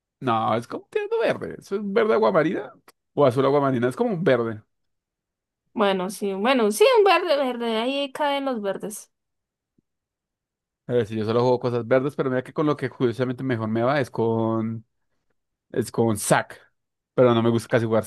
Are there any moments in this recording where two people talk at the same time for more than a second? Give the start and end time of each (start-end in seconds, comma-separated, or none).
none